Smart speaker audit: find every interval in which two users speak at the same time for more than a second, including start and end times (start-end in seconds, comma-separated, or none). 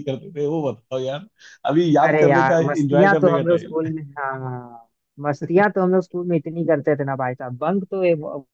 2.0-3.9